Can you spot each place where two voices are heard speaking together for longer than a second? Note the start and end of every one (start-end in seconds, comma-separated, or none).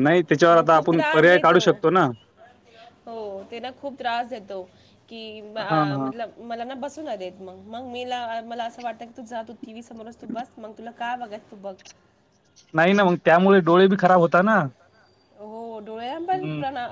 none